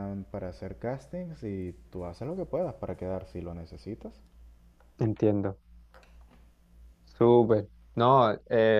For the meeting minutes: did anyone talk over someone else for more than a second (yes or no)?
no